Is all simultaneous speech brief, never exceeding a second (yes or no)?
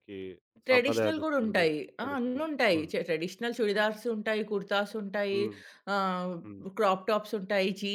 no